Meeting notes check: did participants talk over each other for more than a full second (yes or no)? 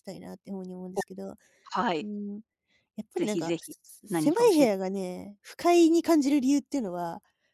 yes